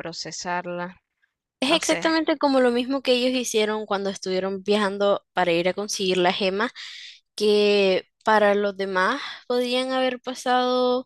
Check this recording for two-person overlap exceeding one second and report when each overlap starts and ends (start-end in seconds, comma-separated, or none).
none